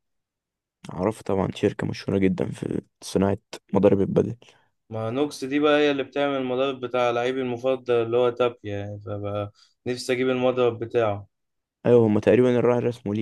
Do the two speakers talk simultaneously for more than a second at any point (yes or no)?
no